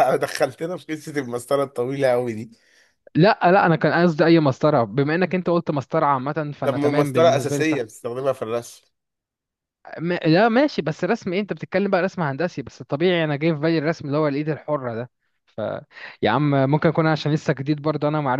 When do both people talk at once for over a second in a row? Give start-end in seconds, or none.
6.6-7.9